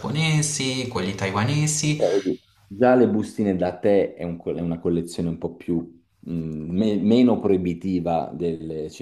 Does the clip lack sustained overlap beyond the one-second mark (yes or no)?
yes